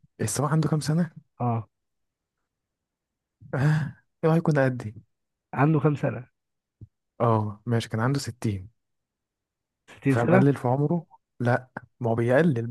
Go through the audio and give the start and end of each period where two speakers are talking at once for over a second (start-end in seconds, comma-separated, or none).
none